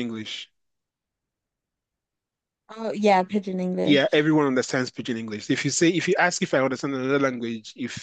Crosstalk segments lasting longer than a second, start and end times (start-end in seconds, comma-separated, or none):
none